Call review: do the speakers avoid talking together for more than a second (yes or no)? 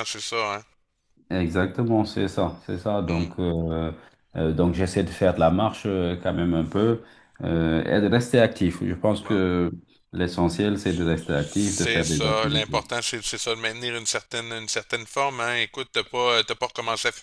no